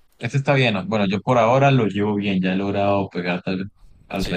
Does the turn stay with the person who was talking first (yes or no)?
no